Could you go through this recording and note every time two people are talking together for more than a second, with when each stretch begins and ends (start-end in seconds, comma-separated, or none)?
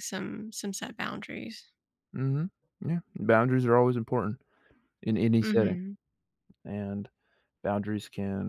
none